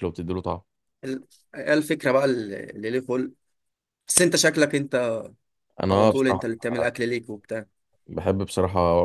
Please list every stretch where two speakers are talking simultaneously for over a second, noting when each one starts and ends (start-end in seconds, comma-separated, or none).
none